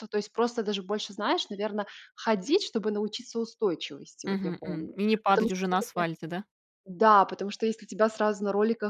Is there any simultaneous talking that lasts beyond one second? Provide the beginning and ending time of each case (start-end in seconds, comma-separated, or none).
4.2-6.0